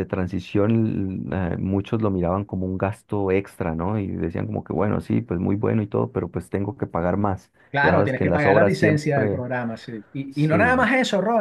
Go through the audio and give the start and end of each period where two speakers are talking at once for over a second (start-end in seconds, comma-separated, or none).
7.7-9.4